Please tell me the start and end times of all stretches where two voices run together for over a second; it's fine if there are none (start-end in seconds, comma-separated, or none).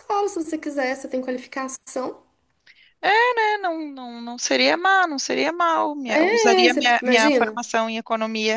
6.0-7.6